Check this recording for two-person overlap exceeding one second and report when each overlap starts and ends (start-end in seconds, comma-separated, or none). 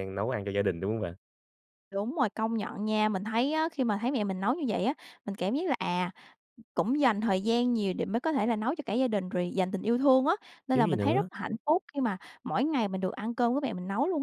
none